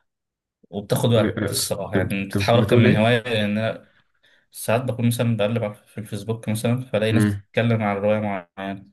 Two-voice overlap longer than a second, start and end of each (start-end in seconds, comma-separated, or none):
1.2-3.1